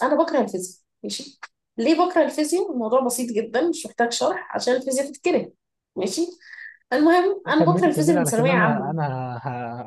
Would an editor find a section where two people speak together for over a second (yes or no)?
yes